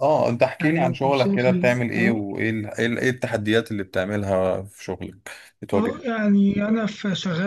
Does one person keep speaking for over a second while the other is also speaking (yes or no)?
yes